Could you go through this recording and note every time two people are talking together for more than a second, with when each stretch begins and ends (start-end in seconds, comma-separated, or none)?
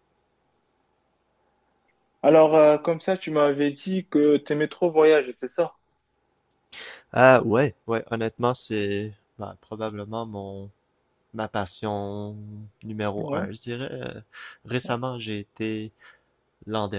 none